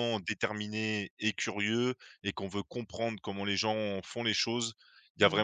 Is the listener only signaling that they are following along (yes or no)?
yes